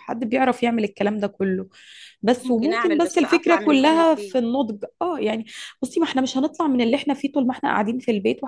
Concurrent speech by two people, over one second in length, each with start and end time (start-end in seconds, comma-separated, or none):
2.4-4.4